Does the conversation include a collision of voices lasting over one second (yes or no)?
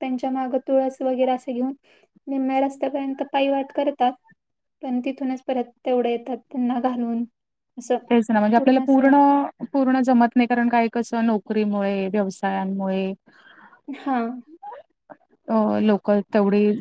no